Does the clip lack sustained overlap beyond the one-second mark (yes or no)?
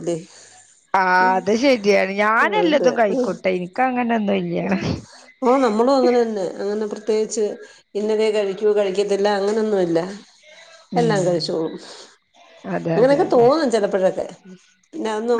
yes